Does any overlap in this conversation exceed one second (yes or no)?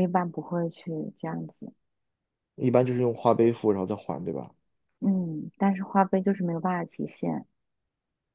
no